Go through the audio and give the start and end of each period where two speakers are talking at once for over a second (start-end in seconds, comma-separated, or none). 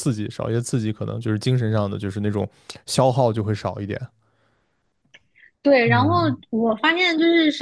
none